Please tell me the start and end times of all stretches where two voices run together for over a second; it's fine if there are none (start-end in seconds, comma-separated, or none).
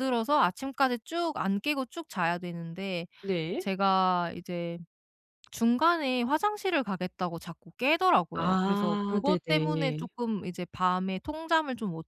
8.3-10.1